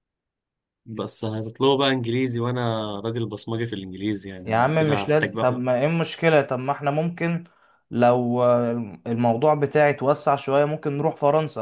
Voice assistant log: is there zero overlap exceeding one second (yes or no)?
no